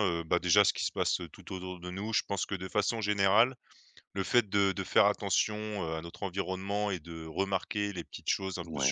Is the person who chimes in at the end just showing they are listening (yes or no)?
yes